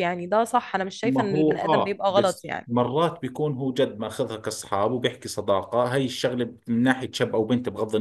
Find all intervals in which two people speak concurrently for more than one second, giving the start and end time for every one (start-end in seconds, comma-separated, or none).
1.0-2.7